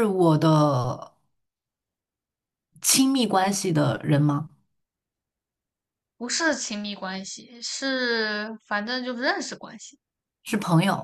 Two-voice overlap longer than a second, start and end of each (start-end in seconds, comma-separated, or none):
none